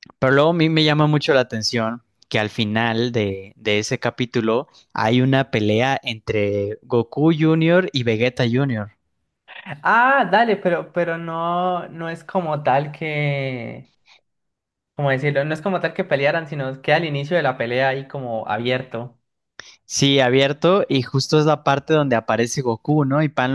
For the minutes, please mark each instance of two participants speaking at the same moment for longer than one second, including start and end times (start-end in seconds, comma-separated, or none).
none